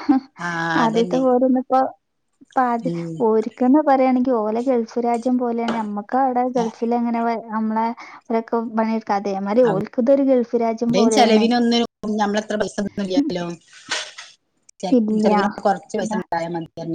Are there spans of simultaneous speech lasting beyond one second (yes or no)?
no